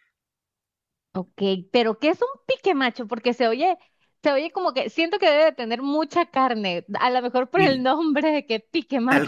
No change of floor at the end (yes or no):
no